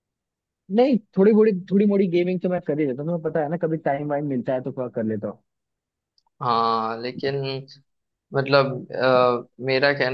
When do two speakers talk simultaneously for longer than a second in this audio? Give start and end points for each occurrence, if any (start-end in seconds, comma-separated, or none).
none